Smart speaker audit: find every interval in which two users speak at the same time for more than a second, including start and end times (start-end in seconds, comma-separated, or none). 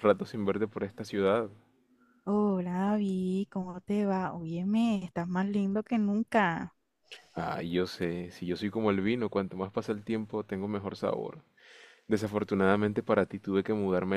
none